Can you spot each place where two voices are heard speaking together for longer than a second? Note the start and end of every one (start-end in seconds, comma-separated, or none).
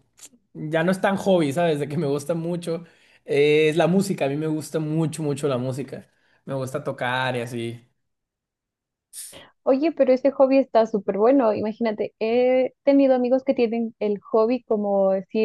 none